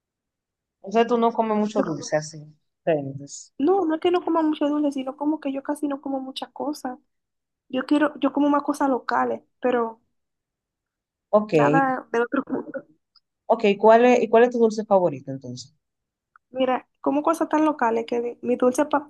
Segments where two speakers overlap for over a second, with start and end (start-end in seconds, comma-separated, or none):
none